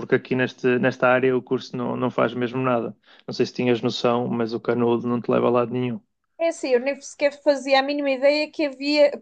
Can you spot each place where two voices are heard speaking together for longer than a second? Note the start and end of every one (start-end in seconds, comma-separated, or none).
none